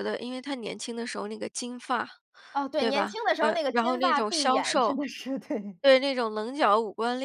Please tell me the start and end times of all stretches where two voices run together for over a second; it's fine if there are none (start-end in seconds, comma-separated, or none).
2.8-5.0